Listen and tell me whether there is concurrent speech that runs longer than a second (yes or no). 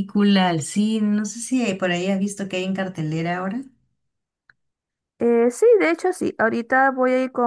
no